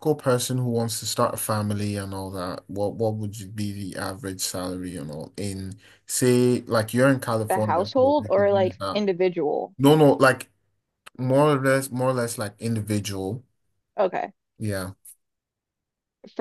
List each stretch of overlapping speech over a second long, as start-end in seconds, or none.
7.5-9.0